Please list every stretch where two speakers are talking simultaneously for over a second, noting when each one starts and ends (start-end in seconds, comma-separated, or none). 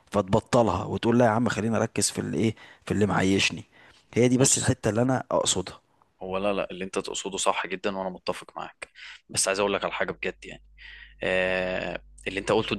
none